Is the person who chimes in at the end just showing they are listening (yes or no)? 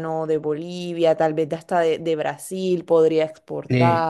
no